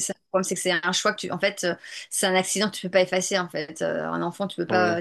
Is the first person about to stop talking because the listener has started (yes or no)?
no